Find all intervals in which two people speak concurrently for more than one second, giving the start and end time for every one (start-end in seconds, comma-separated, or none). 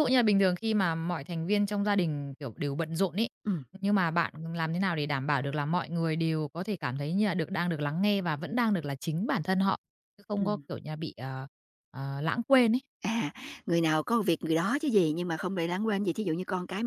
none